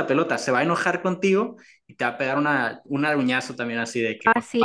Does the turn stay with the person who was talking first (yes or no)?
no